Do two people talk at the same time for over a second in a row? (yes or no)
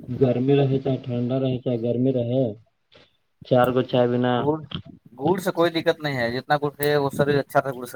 no